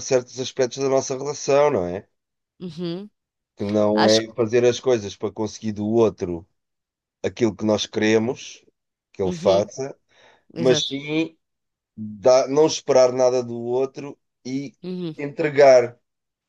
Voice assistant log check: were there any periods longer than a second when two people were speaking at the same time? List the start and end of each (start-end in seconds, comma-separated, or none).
none